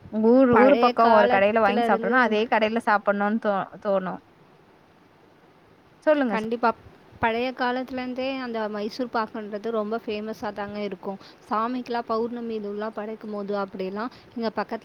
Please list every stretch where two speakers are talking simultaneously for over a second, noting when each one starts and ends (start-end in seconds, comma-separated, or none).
0.5-2.2